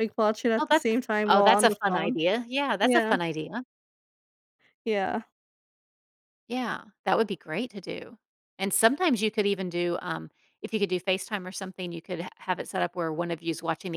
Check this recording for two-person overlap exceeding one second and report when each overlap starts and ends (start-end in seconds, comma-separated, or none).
0.6-2.2